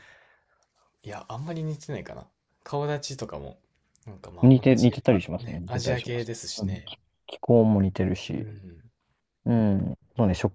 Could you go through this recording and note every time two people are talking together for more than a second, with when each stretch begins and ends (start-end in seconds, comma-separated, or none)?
4.4-6.9